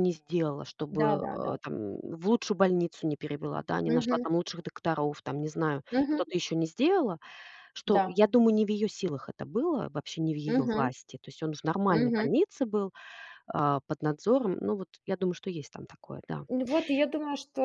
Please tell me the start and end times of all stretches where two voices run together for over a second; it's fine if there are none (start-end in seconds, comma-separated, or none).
none